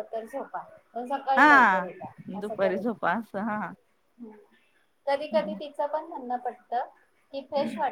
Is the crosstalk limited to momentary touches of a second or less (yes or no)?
no